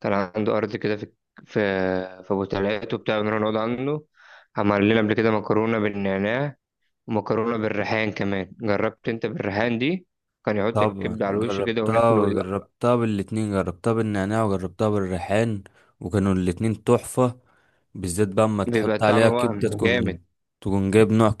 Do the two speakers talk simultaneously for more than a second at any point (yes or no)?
yes